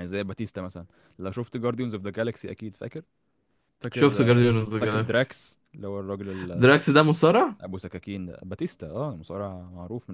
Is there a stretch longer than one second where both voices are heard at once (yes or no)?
yes